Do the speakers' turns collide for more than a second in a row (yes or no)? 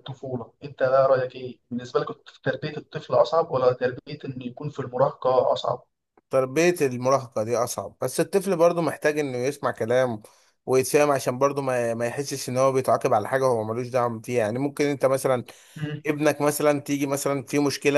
no